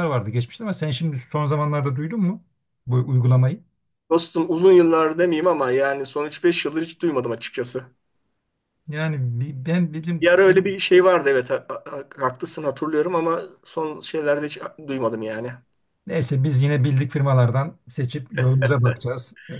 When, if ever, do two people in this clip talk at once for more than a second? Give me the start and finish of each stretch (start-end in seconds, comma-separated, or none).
none